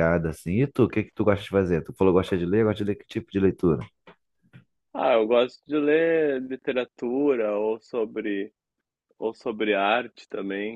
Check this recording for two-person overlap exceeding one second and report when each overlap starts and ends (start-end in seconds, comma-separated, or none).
none